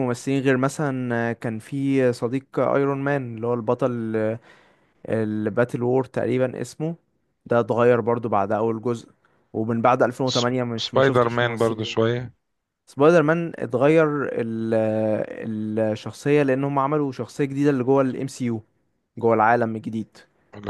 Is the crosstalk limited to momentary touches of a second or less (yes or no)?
no